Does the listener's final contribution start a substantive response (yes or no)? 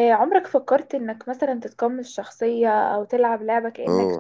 yes